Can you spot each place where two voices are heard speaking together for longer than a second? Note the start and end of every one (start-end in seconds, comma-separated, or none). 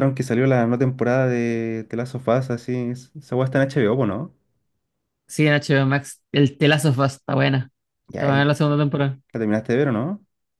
none